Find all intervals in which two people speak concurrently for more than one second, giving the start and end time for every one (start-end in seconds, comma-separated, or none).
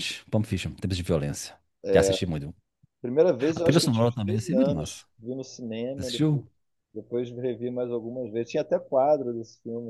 3.4-5.0